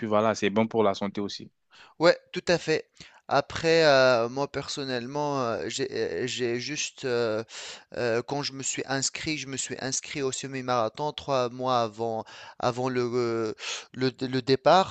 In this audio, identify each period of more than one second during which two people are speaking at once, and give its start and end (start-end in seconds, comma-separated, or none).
none